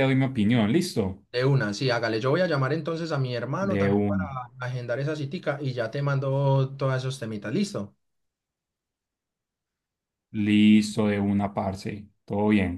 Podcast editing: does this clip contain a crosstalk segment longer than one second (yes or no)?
no